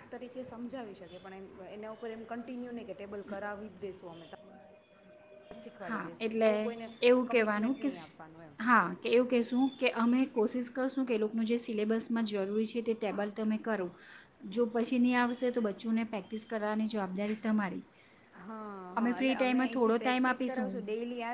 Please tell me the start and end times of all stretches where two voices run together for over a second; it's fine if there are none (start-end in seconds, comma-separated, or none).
19.2-20.8